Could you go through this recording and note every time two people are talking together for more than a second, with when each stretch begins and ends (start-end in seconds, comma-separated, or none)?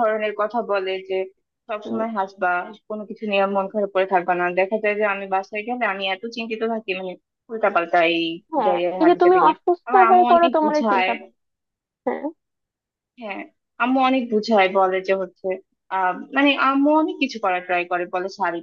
8.6-11.1